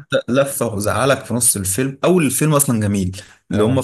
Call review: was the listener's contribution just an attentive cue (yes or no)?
yes